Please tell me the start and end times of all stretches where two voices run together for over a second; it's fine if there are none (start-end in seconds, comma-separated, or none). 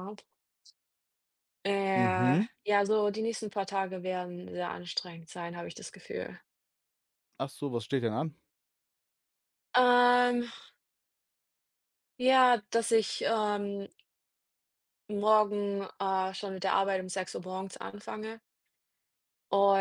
none